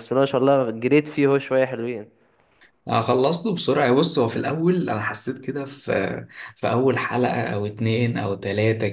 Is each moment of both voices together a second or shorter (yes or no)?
yes